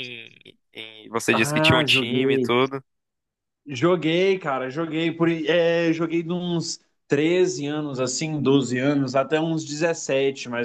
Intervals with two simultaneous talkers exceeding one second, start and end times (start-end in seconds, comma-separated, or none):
1.3-2.6